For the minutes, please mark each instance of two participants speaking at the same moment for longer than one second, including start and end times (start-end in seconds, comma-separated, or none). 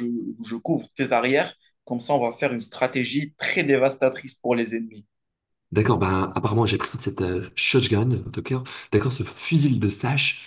none